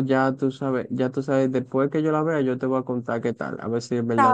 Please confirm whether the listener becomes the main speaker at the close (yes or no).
yes